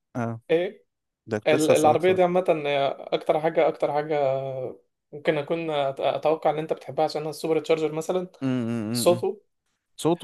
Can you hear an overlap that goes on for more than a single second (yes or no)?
no